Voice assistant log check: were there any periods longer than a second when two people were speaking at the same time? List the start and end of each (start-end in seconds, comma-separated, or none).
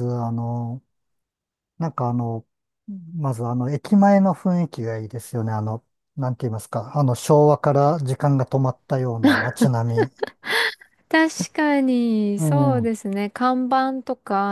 none